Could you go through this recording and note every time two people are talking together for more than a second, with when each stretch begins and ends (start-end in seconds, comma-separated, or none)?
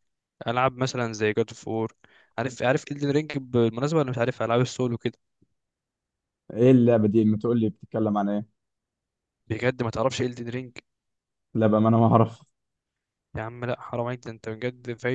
none